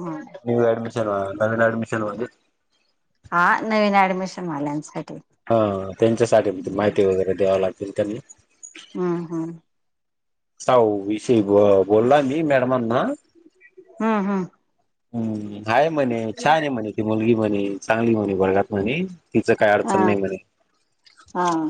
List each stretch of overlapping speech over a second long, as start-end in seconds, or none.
none